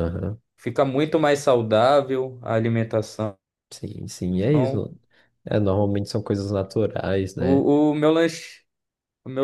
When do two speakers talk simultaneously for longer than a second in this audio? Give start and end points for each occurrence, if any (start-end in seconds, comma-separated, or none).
none